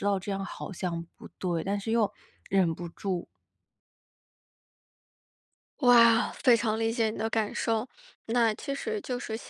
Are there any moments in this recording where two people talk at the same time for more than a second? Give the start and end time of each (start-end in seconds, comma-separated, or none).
none